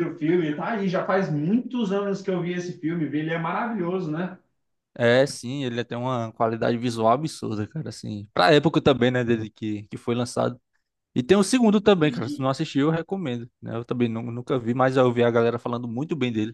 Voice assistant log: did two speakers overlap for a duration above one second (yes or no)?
no